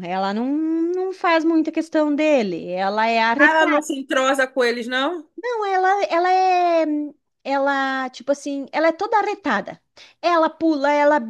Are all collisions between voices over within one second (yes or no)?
yes